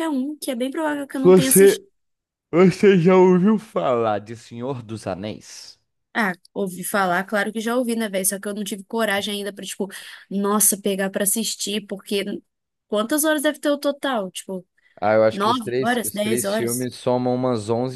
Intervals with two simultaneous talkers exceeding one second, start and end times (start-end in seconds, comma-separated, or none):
15.3-16.9